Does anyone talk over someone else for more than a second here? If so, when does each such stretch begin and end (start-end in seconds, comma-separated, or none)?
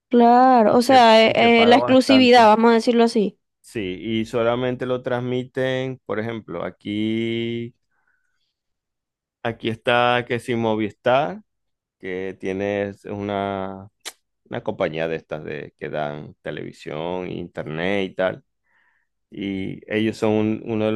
0.7-2.5